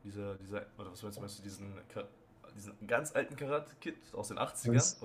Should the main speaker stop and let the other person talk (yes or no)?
yes